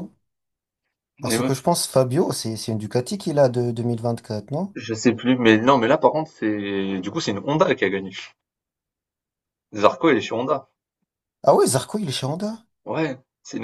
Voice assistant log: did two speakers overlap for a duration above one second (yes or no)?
no